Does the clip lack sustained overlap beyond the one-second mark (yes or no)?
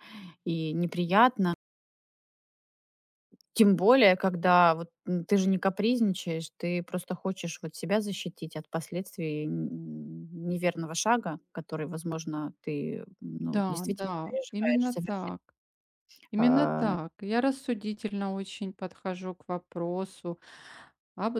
no